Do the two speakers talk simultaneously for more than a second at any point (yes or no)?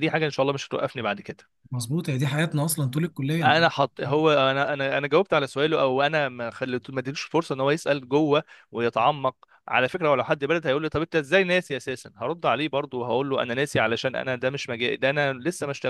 no